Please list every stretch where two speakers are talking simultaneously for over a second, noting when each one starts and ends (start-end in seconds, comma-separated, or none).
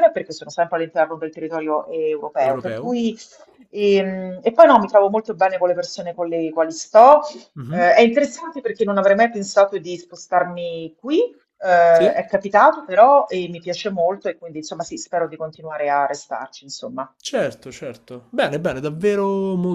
none